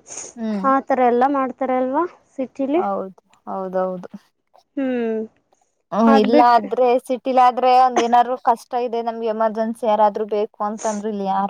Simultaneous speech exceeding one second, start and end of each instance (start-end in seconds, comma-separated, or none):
none